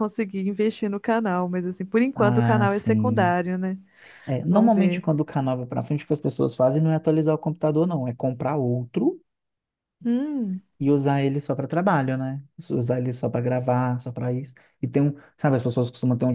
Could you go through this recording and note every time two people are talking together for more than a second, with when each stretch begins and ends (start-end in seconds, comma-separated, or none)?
2.1-3.3